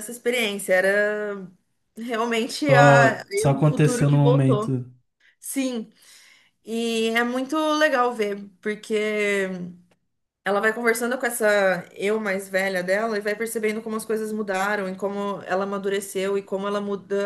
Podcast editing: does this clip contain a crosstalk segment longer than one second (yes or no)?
yes